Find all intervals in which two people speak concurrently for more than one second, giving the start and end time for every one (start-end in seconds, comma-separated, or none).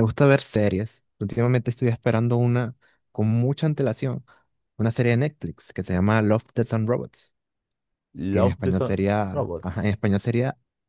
8.3-9.8